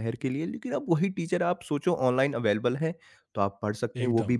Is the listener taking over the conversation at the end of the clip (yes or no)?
no